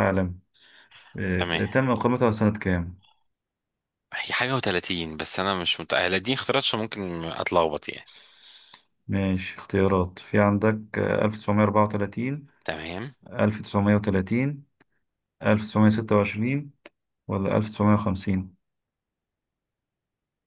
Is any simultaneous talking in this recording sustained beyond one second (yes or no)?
no